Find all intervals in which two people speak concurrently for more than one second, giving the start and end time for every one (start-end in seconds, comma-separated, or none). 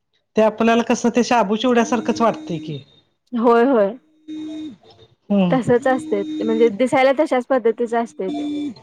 none